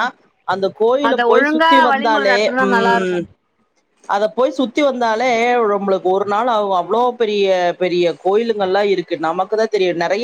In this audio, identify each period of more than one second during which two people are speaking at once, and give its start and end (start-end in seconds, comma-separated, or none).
1.1-3.2